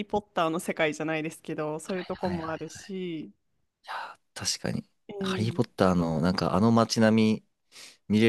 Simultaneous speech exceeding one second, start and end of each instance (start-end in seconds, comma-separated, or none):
none